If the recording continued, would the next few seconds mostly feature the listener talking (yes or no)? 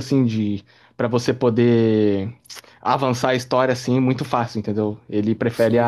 no